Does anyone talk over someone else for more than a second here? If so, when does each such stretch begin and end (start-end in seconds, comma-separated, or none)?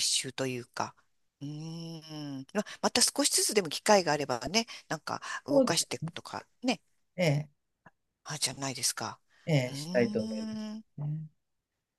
9.7-11.0